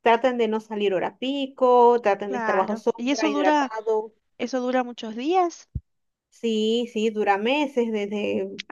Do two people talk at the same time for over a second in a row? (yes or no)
yes